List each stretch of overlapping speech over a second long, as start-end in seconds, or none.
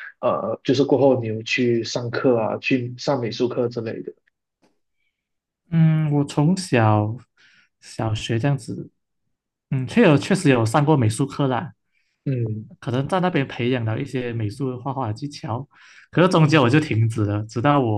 none